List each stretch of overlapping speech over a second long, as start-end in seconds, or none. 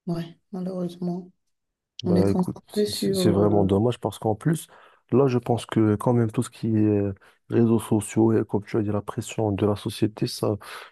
2.0-3.7